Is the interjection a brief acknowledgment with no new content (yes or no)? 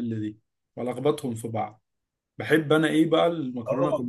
no